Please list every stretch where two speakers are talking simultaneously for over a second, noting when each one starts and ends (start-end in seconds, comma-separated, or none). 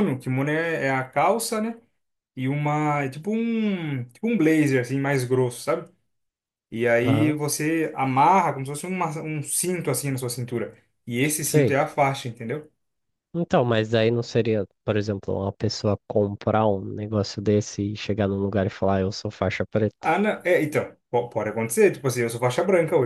none